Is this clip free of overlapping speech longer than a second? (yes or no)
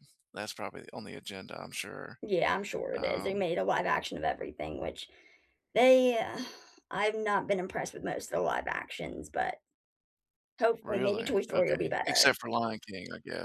no